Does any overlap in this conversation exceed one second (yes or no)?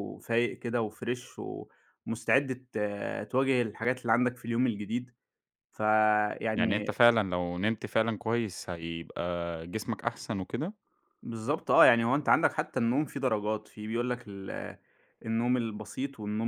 no